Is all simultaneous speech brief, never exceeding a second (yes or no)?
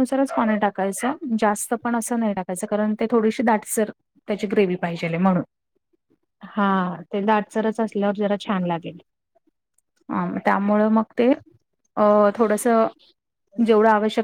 yes